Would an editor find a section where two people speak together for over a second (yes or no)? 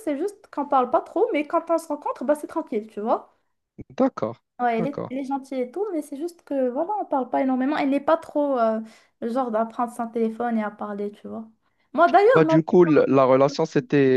no